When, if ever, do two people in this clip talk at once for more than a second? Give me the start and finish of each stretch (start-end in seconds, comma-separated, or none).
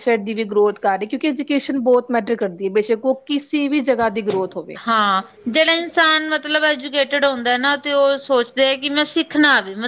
none